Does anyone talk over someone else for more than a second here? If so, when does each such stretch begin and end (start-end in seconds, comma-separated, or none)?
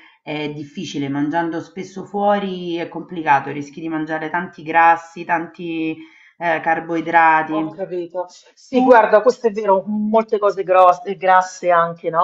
none